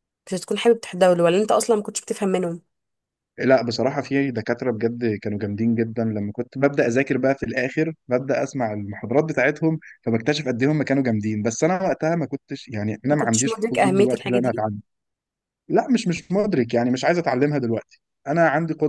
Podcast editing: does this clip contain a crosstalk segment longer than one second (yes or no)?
yes